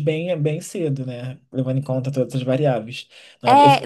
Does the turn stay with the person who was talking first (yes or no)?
no